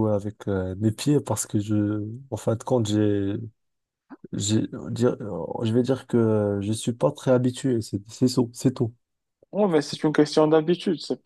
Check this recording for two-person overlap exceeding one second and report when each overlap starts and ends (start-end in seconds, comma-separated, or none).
none